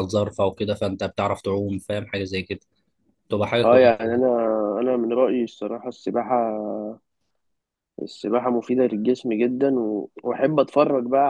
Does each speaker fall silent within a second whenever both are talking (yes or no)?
yes